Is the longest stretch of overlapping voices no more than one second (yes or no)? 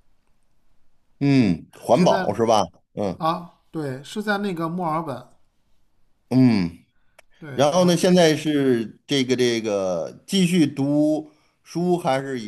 yes